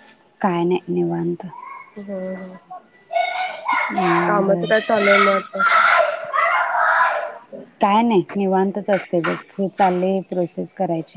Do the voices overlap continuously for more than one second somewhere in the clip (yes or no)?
no